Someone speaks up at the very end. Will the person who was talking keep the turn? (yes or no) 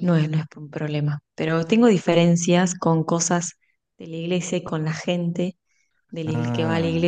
yes